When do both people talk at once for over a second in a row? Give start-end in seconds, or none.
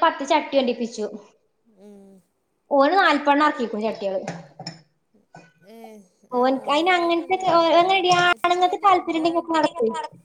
6.8-9.2